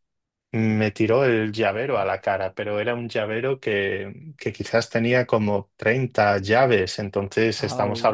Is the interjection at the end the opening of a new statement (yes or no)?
no